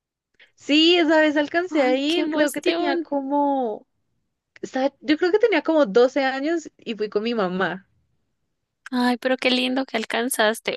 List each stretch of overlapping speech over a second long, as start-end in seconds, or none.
1.7-3.1